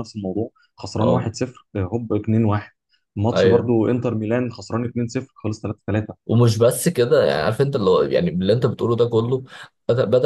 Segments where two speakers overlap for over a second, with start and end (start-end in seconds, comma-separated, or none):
none